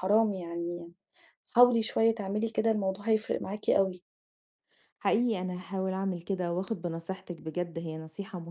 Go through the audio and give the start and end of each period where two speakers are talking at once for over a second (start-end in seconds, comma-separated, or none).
none